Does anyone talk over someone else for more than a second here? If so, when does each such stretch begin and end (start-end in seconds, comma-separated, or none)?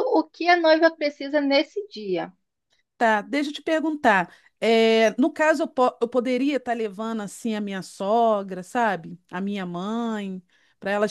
none